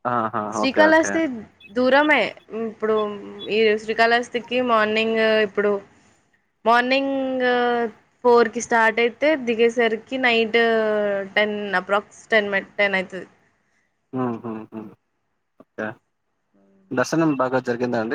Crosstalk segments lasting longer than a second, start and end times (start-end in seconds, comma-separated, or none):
none